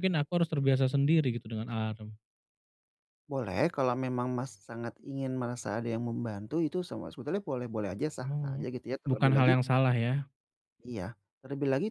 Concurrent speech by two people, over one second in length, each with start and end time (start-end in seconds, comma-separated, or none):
8.2-9.6